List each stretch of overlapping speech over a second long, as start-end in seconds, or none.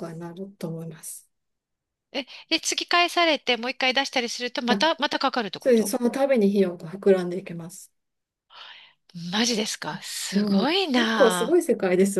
10.1-11.6